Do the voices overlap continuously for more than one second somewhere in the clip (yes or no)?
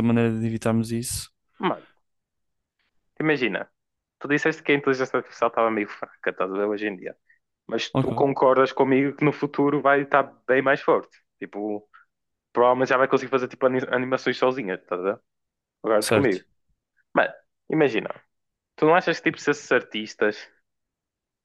no